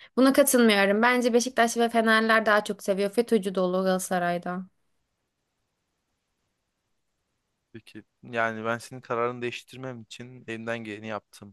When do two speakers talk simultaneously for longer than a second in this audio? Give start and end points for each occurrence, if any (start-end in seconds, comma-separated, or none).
none